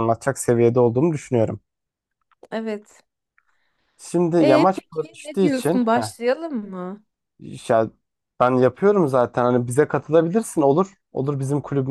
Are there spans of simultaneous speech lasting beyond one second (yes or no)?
yes